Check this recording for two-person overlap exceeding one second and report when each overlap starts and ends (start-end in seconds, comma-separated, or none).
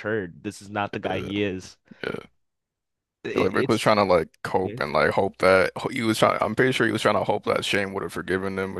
none